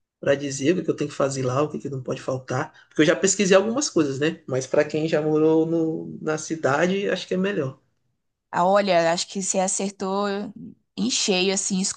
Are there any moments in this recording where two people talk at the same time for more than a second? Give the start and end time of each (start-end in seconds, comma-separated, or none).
none